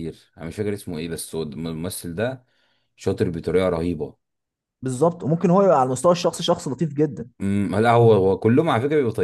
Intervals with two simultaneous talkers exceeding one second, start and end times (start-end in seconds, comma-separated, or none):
none